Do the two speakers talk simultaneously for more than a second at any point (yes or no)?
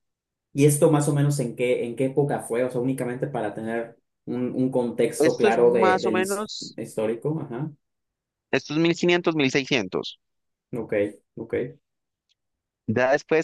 yes